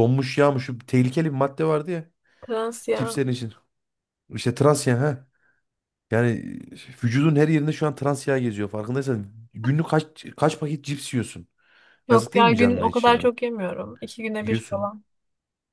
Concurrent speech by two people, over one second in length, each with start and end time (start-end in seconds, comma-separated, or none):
12.1-13.3